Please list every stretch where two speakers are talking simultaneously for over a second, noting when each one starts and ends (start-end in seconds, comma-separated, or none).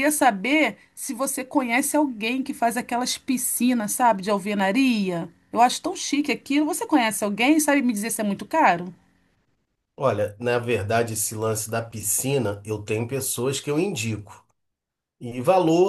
none